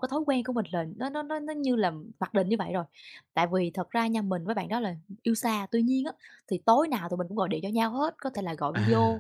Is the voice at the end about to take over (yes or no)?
no